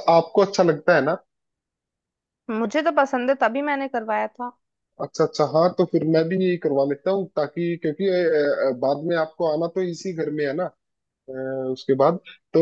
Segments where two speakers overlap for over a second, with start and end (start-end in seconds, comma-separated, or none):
none